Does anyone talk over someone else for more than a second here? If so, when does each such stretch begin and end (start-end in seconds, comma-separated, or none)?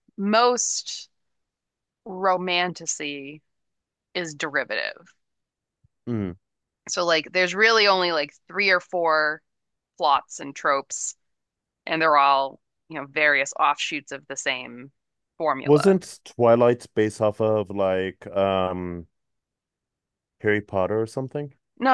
none